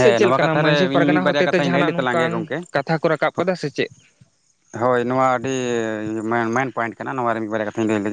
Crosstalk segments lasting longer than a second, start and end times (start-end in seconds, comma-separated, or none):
0.5-2.6